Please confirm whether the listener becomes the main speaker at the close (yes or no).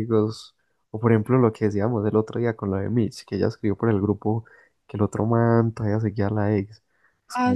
no